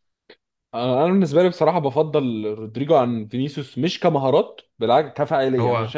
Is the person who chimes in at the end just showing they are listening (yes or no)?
yes